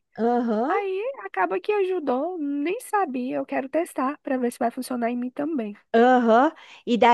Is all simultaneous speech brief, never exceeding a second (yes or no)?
yes